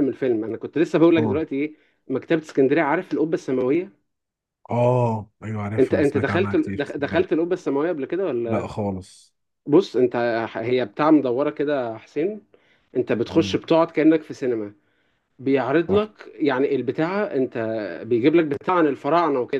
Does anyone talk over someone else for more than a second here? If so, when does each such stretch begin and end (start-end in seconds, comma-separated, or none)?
5.8-7.4